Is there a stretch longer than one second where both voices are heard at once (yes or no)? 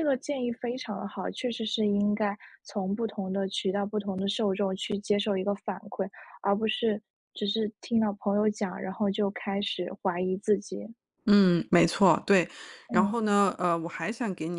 no